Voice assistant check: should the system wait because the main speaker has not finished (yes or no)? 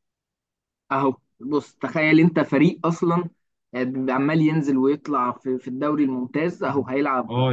no